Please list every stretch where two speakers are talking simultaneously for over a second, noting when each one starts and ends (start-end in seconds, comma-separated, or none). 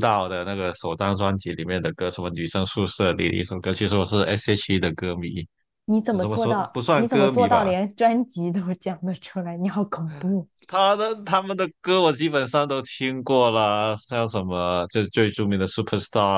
6.2-7.7